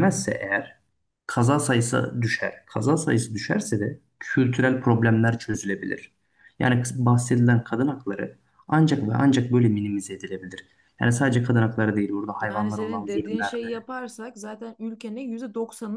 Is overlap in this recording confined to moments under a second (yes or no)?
no